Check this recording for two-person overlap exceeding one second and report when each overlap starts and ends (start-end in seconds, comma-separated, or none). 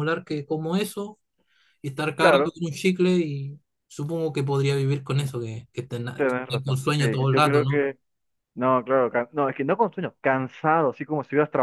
6.2-7.9